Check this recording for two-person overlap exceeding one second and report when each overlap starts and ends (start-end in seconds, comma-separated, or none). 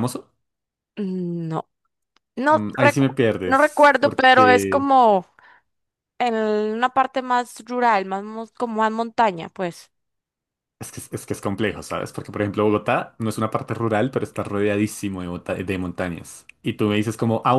2.5-4.9